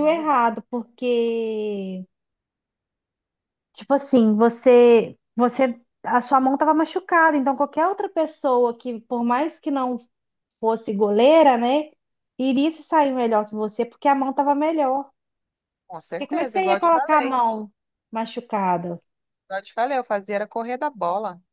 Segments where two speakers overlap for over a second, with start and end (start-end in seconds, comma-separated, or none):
16.1-17.4